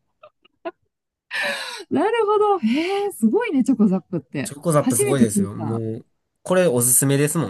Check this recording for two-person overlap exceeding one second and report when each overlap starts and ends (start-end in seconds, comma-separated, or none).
4.4-5.8